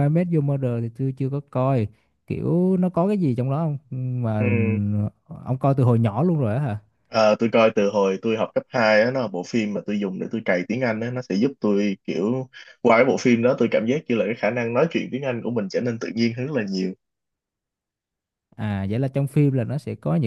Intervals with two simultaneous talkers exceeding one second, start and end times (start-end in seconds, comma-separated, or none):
none